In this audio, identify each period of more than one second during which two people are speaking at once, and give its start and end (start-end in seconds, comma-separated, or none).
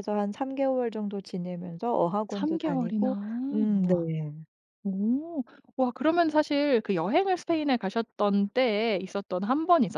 2.3-4.0